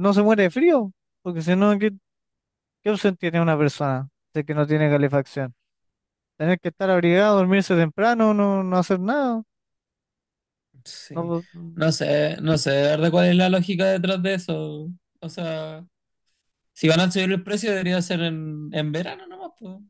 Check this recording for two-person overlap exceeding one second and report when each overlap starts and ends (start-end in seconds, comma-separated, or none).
none